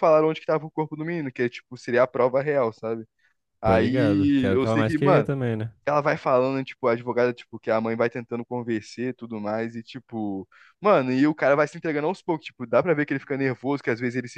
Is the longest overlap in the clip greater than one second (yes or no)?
yes